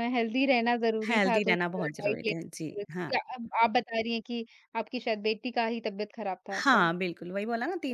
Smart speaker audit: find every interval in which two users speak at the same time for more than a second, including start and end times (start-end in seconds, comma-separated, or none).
1.1-3.1